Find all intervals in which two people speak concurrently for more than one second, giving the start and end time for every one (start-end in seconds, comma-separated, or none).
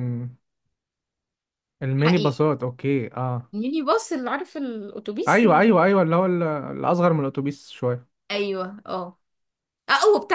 none